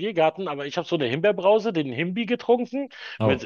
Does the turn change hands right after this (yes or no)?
no